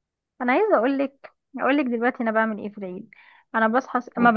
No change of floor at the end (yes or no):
yes